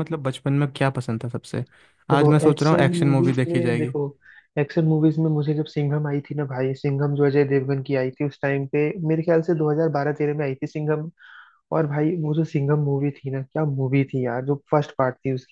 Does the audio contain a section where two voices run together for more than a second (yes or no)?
yes